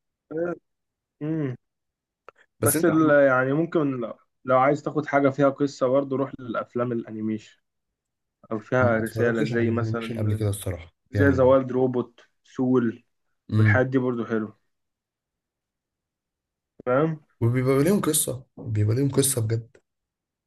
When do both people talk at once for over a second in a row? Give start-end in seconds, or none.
8.8-10.4